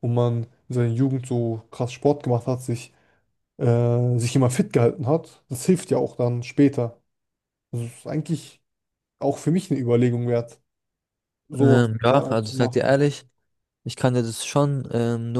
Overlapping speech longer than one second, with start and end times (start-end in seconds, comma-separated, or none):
11.6-13.0